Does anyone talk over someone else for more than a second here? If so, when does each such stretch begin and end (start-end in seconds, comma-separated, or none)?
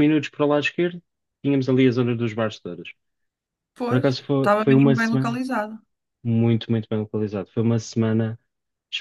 3.9-5.4